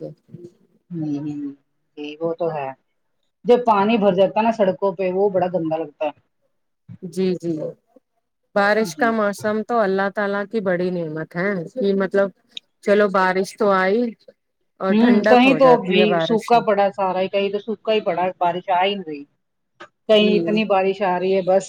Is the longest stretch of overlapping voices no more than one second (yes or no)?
no